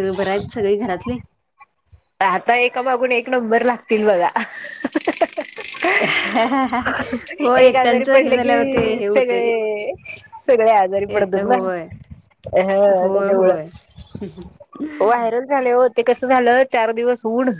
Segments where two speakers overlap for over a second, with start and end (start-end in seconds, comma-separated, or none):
7.6-9.4